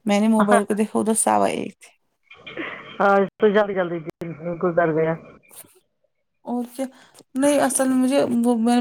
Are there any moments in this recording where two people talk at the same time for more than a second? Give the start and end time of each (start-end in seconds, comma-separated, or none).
none